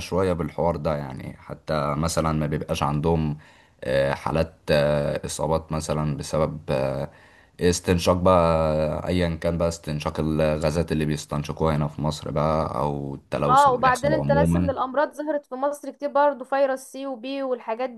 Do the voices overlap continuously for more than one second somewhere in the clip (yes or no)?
yes